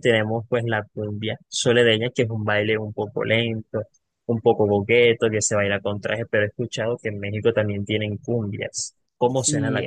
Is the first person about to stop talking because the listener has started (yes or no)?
yes